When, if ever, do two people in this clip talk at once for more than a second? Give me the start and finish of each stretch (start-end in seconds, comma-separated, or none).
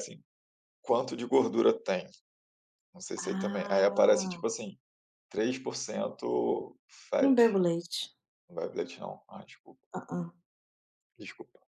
3.2-4.4